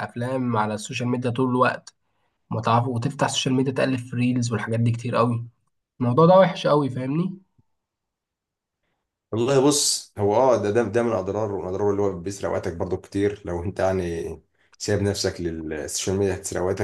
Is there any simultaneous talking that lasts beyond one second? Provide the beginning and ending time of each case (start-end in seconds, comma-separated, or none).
none